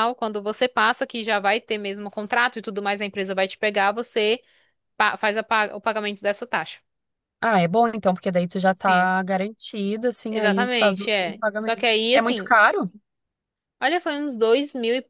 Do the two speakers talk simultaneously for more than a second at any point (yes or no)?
yes